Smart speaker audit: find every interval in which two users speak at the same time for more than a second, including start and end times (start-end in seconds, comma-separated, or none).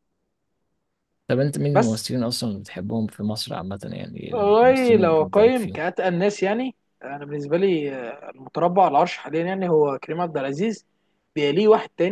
4.3-5.8